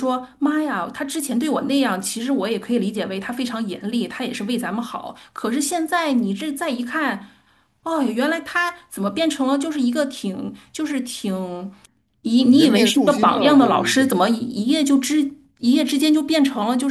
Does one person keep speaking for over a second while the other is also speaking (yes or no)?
yes